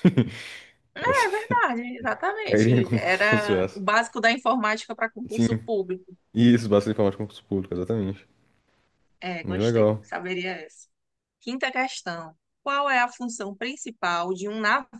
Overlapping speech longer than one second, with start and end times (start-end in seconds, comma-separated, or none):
2.4-3.8